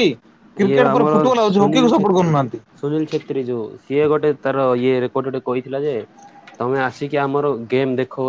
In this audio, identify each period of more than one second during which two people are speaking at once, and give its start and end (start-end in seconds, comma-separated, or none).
0.6-2.3